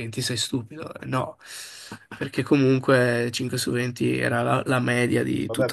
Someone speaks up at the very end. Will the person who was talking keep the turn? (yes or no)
no